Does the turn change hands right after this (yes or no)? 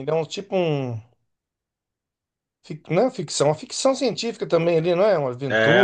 yes